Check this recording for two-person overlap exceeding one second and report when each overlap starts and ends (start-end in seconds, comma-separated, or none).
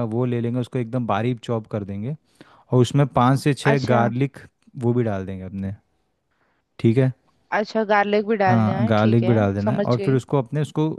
8.5-10.2